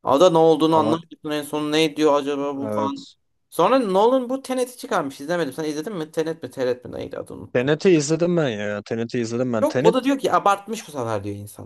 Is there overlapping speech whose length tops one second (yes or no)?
no